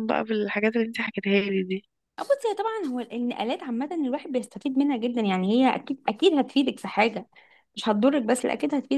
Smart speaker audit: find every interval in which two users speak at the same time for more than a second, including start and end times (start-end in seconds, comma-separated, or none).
none